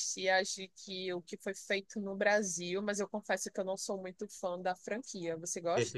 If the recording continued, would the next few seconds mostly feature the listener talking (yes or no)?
yes